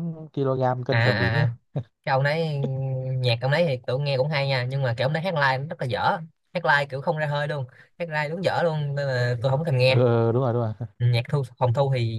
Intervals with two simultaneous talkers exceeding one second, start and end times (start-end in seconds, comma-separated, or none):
none